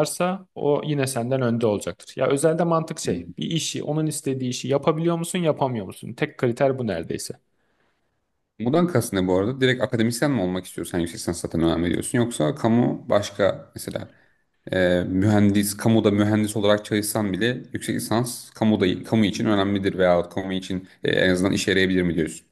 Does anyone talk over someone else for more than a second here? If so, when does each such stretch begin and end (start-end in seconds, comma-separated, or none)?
none